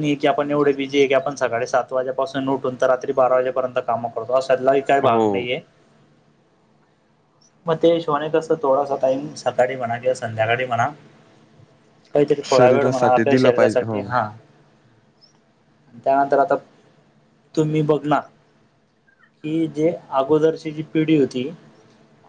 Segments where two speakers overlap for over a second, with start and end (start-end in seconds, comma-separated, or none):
12.4-14.0